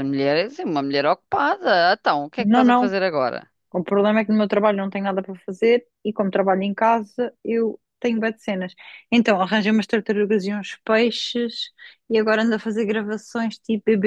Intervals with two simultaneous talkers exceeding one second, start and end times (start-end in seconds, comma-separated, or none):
none